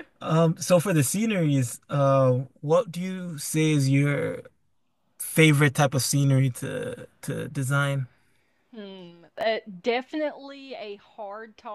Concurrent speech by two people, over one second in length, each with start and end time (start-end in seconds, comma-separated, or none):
none